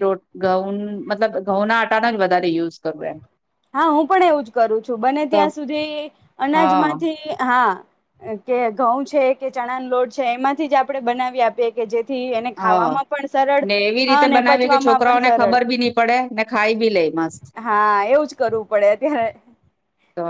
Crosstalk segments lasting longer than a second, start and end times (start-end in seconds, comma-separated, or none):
14.1-15.6